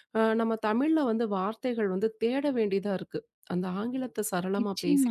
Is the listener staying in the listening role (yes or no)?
no